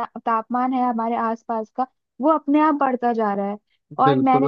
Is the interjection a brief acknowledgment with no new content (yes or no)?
yes